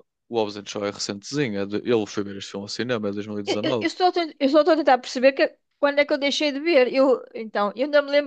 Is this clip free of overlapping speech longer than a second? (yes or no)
yes